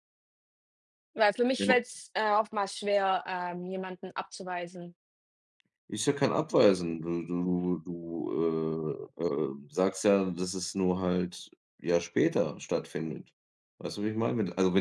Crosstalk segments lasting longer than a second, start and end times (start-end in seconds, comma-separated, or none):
none